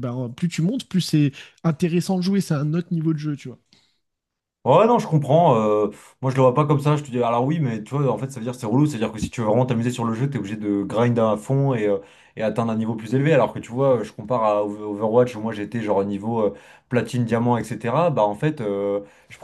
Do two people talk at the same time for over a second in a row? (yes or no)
no